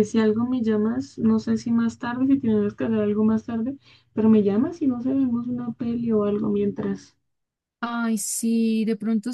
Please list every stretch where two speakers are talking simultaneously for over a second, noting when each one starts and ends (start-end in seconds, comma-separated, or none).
none